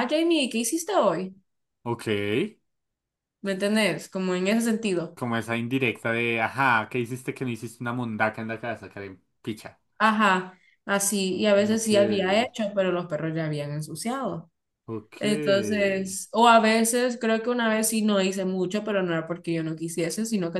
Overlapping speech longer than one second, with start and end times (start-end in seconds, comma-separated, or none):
none